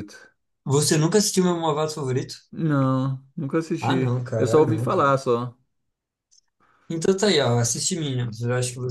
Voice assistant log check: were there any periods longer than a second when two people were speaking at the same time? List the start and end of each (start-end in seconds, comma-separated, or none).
3.8-5.1